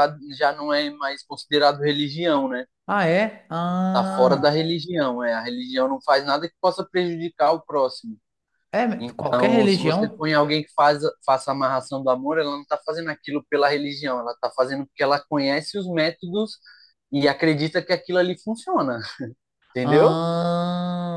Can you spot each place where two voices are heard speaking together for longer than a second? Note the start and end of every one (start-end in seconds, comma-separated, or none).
9.0-10.2